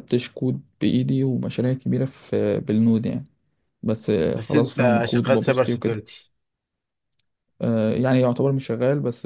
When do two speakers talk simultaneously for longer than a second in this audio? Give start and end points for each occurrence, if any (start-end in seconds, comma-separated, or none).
4.3-6.0